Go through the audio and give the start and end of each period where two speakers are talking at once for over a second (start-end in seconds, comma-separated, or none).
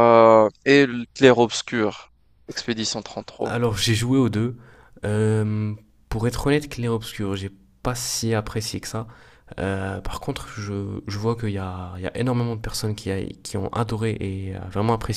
none